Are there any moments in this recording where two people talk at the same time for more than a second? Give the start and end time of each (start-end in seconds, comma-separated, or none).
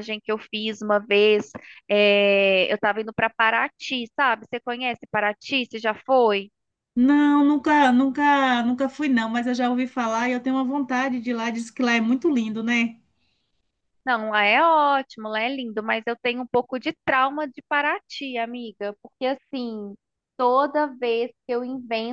none